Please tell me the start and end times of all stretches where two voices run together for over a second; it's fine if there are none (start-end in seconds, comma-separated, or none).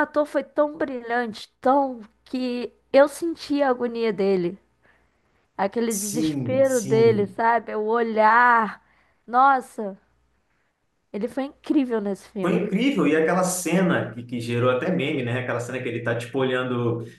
5.9-7.3